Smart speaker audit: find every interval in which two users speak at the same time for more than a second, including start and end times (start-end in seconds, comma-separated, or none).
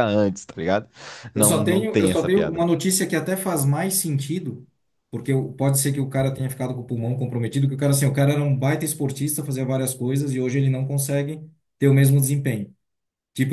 1.4-2.6